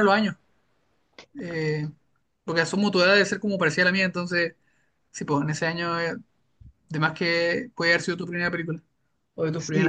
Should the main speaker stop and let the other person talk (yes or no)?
yes